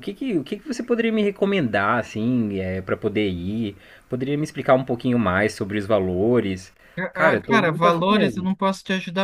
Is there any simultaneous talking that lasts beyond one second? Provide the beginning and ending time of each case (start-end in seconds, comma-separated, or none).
7.1-8.6